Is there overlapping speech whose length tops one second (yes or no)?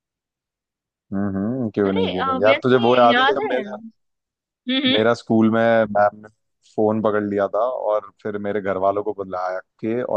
yes